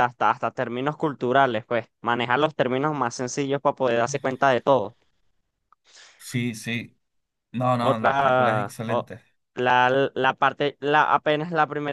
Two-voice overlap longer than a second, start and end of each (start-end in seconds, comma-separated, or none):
7.8-9.1